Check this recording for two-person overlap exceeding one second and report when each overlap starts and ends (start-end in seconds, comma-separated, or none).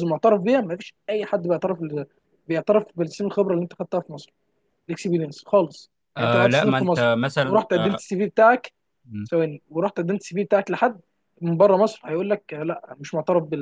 6.2-8.0